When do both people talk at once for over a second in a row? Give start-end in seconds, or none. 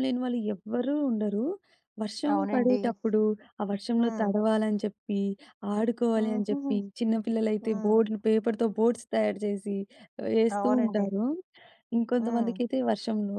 none